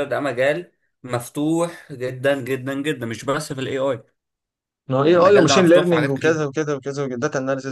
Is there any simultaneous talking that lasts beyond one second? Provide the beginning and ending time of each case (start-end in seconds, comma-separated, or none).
5.0-6.4